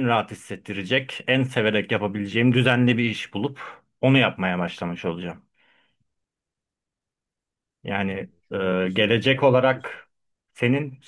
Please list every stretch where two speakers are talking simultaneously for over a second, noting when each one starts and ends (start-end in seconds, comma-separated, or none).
8.5-10.0